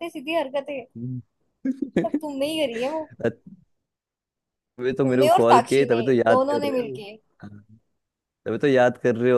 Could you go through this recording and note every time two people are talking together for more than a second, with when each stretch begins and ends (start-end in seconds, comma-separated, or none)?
5.0-7.0